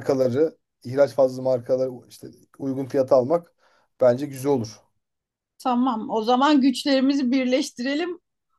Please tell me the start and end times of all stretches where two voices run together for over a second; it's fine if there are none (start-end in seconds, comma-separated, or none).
none